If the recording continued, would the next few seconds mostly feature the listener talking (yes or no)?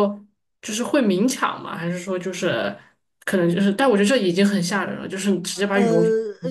yes